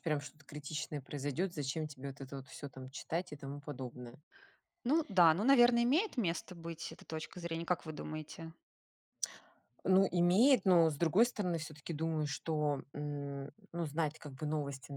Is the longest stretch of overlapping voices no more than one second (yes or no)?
yes